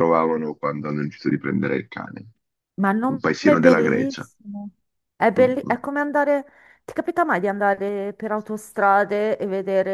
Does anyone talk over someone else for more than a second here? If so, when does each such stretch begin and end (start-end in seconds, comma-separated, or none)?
3.1-4.3